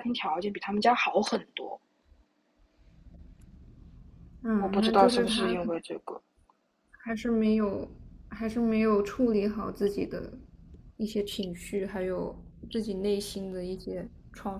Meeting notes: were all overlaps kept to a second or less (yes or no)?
no